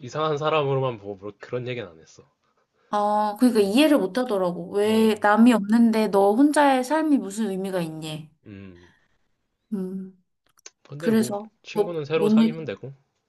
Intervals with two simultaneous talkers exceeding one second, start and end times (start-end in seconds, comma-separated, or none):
11.0-12.6